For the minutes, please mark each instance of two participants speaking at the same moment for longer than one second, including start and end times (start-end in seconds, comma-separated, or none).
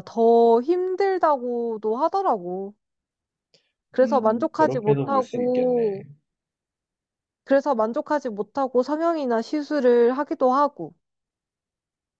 4.0-5.8